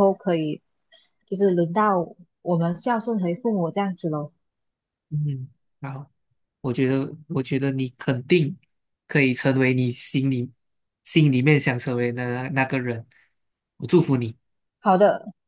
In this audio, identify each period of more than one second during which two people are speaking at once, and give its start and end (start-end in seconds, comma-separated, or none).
none